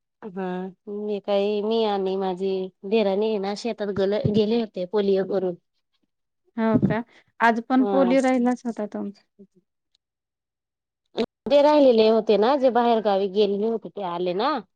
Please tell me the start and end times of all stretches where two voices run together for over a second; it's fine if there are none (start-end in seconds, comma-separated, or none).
none